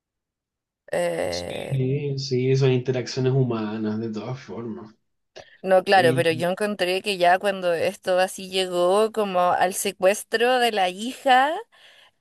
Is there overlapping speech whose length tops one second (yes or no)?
no